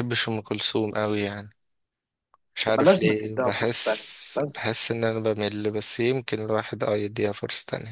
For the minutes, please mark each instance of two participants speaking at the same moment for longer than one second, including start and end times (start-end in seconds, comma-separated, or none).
2.7-4.6